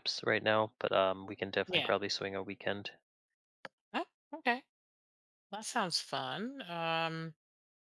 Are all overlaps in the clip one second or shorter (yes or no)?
yes